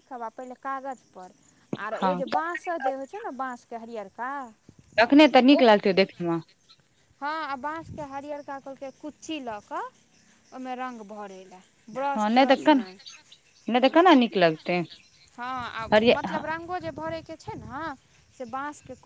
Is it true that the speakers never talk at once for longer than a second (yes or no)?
yes